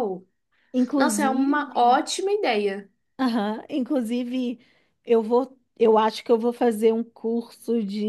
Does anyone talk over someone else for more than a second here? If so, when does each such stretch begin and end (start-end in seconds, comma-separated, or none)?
none